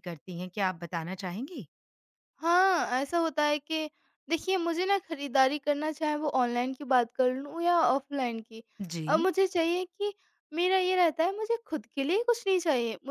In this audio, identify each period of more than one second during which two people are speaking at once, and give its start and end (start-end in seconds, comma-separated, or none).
none